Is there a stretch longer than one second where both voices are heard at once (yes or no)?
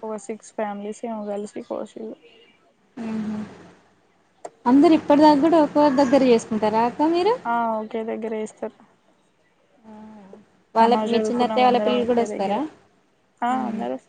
yes